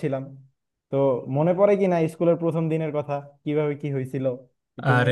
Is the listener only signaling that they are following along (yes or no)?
no